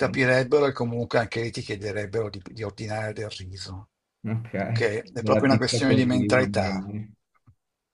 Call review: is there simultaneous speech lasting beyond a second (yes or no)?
yes